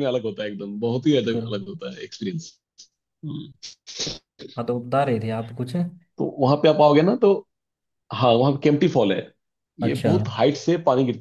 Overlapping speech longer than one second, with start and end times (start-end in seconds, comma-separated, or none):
none